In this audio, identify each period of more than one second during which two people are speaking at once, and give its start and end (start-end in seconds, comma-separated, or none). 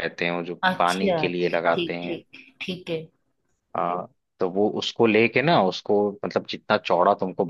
0.7-2.2